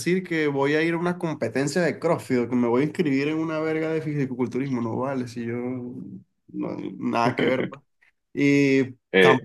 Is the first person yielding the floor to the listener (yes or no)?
no